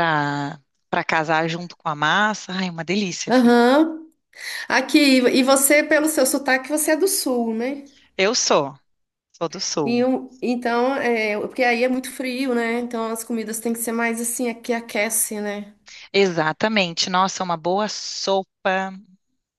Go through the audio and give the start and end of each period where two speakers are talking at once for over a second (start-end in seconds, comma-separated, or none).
none